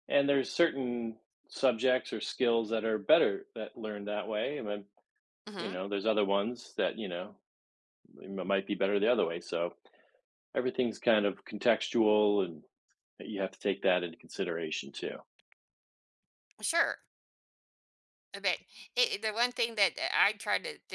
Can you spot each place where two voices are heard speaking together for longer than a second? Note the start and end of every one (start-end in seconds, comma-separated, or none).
none